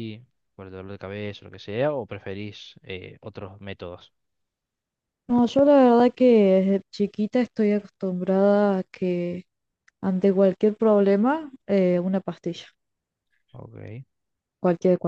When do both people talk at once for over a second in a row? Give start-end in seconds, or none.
none